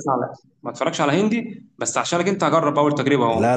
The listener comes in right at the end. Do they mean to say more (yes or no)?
yes